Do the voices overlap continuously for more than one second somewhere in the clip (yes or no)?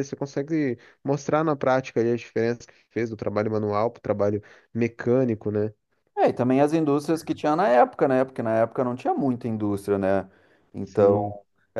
no